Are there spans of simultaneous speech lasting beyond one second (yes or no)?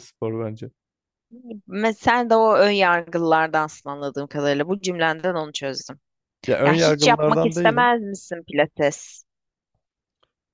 yes